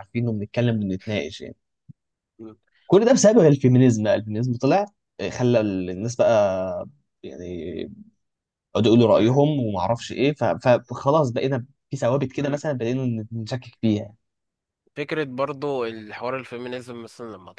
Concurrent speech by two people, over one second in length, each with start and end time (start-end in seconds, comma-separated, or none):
none